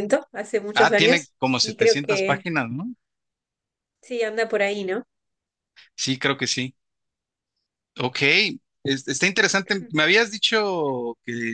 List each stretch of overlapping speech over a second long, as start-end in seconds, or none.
0.8-2.5